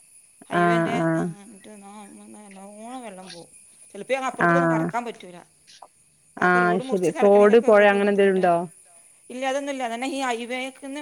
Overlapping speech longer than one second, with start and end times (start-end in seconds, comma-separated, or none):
6.5-8.4